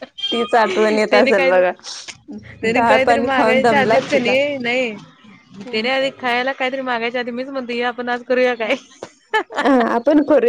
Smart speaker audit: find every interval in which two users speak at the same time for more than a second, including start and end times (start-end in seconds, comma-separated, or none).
2.7-4.3